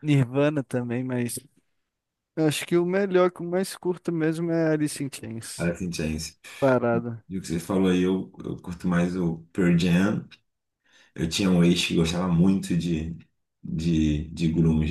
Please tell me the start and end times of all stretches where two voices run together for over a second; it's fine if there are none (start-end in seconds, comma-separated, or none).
none